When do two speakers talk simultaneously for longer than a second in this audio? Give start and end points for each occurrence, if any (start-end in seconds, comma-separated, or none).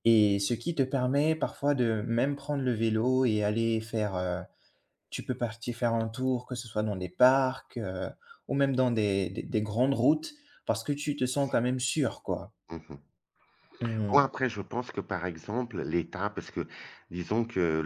none